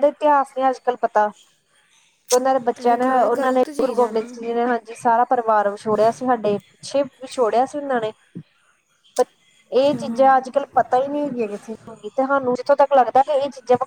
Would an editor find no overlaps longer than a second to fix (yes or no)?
no